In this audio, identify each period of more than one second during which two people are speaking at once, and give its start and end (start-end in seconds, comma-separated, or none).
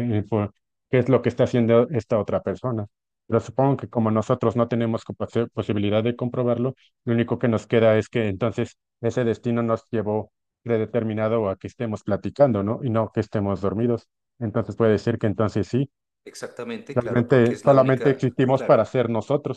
16.9-18.8